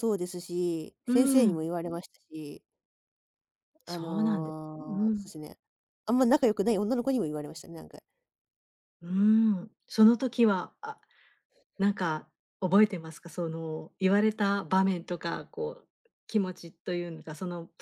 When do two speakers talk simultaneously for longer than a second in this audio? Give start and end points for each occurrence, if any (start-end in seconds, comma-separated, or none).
3.9-5.3